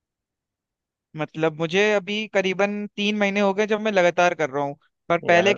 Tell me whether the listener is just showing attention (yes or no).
yes